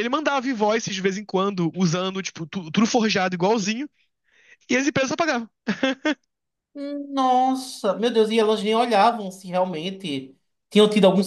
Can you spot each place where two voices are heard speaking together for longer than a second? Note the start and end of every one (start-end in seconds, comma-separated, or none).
none